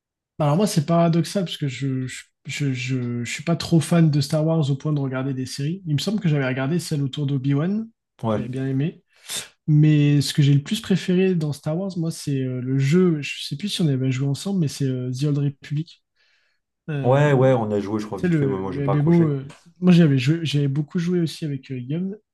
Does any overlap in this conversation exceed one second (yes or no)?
yes